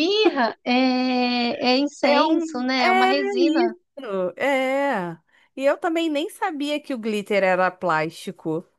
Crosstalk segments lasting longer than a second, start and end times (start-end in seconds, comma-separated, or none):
2.1-3.7